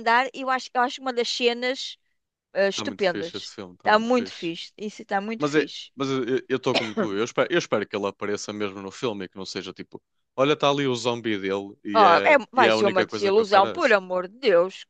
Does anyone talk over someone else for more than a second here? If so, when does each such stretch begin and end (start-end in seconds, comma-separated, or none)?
2.7-4.5, 11.9-13.9